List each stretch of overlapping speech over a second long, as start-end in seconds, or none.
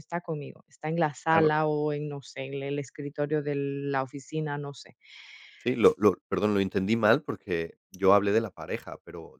none